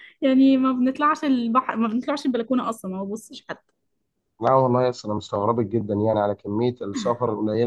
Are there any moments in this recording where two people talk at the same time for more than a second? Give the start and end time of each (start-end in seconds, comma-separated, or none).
none